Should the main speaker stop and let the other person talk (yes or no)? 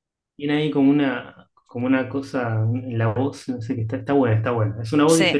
yes